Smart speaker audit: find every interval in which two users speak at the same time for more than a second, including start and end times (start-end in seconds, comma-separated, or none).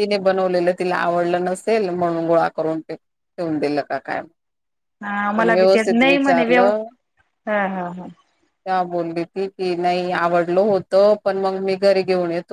5.3-6.8